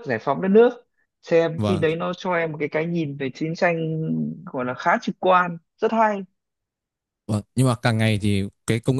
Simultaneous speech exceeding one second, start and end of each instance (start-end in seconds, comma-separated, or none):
none